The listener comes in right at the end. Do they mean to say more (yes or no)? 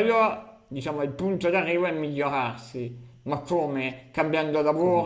no